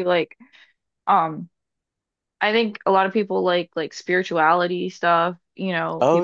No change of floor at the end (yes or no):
yes